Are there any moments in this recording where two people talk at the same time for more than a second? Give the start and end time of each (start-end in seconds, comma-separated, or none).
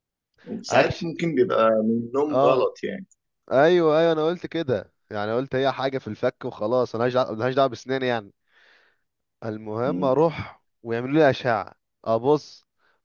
none